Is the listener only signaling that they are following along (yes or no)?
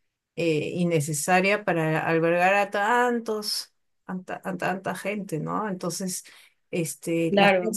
yes